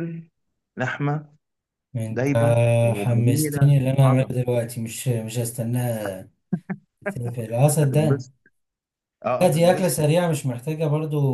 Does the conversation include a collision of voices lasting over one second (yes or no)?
yes